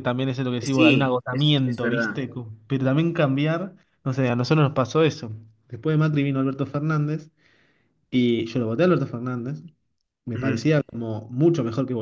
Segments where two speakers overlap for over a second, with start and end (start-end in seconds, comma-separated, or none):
0.6-2.2